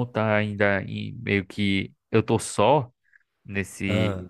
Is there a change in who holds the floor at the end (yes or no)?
no